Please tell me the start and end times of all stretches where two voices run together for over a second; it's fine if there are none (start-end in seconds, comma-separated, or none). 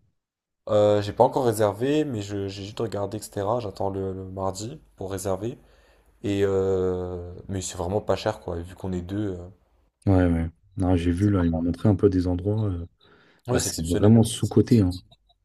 13.5-14.9